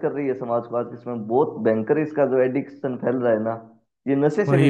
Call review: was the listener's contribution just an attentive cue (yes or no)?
no